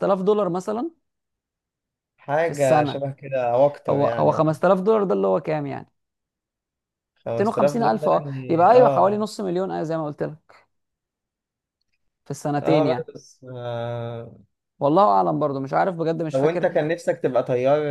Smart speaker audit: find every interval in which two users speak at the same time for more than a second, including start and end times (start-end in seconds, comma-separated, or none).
7.3-9.2